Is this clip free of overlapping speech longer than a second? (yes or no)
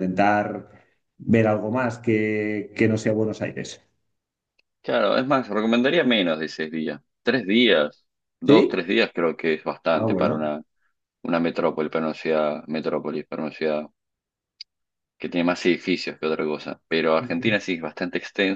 yes